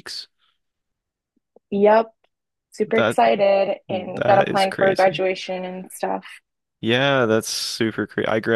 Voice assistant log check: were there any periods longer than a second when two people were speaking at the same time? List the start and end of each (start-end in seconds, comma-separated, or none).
3.9-5.2